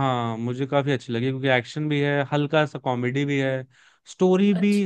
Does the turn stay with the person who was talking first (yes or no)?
yes